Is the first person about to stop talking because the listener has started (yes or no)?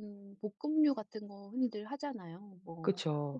no